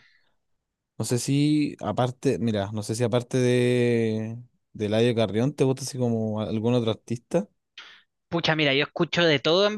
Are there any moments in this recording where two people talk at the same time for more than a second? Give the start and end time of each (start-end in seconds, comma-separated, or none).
none